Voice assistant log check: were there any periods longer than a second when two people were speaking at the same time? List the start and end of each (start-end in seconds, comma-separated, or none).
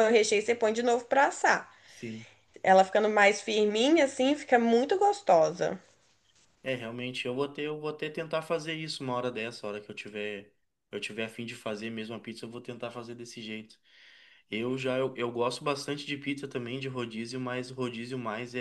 none